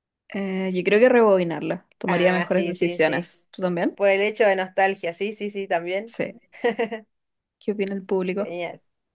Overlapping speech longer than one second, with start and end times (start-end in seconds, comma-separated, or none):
2.1-3.3